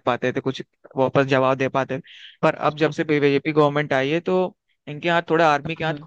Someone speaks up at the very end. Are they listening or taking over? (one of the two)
listening